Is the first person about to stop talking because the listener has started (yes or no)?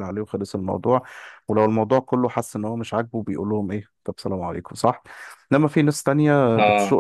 no